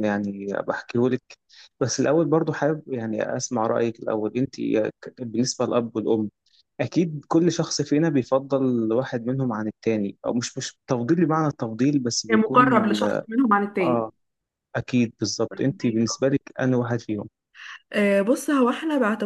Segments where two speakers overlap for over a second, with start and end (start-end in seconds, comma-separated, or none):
none